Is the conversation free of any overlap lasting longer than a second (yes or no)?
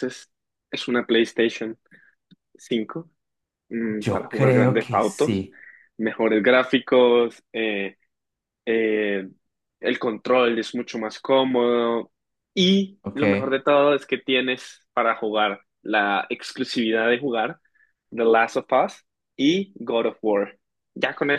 no